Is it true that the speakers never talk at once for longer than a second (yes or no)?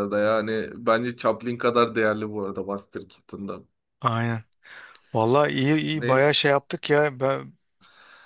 yes